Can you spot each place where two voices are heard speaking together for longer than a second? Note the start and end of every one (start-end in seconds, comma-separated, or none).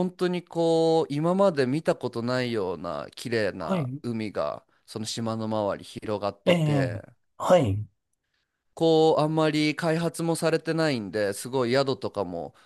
none